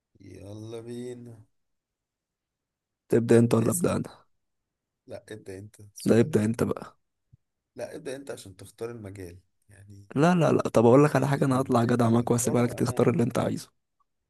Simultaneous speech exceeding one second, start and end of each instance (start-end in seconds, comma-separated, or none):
11.2-13.2